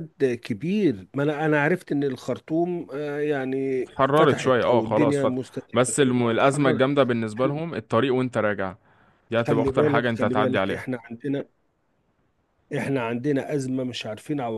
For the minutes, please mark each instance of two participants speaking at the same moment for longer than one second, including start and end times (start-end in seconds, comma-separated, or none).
3.8-5.4, 9.3-10.9